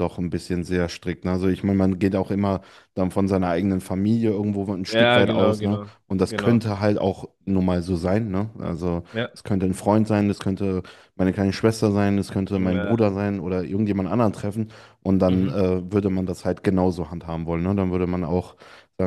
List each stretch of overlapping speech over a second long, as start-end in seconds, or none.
4.9-6.6